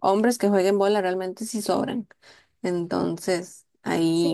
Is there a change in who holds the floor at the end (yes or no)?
yes